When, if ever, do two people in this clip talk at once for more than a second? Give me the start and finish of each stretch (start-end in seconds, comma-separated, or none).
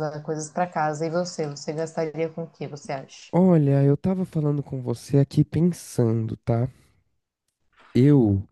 none